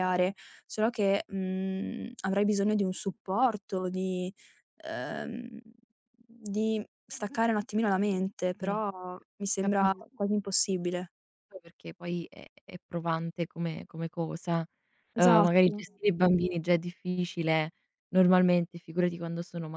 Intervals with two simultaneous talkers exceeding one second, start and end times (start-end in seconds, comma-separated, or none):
none